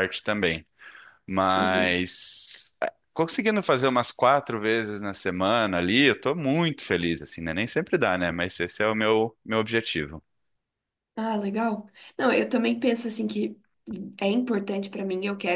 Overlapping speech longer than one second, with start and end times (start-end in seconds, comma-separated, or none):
none